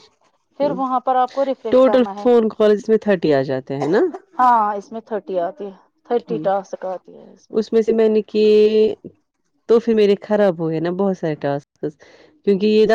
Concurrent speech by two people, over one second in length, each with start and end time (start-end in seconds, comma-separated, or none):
0.6-2.3